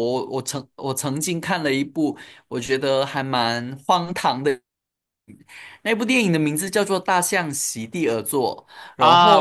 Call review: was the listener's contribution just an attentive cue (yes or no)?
no